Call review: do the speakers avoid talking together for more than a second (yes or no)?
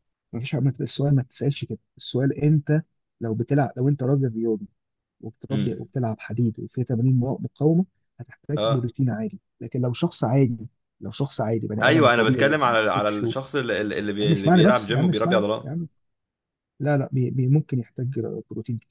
no